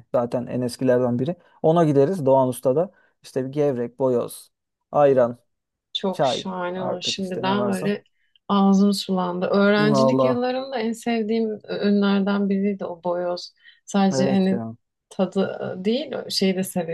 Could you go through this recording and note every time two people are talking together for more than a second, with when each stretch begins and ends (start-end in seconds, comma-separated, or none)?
6.1-7.9